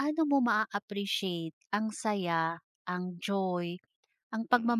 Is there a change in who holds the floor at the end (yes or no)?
no